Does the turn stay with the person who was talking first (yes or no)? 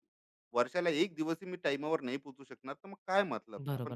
no